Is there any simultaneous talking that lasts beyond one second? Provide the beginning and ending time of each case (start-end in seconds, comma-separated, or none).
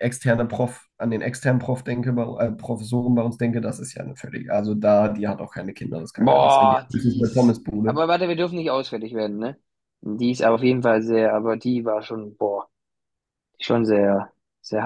6.2-8.0